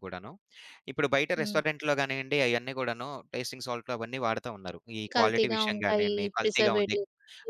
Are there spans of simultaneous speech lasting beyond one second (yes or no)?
yes